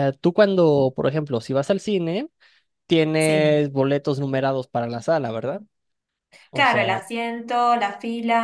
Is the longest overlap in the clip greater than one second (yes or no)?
no